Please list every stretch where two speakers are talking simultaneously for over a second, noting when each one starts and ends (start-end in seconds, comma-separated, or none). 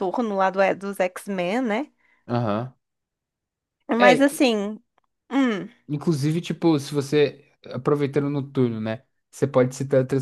none